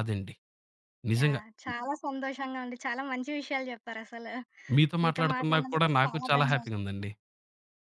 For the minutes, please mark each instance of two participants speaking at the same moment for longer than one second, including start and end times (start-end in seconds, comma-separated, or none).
5.0-6.7